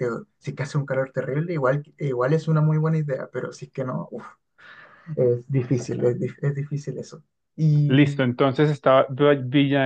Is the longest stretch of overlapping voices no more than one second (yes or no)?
yes